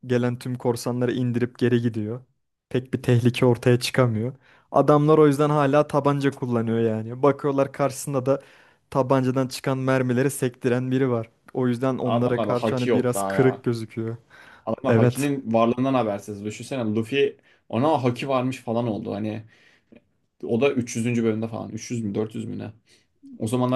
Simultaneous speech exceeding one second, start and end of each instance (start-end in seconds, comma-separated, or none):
12.1-13.6